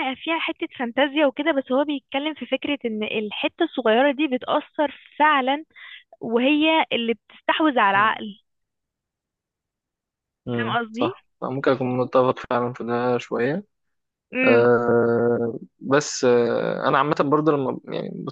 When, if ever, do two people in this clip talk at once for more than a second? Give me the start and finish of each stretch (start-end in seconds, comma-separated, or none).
none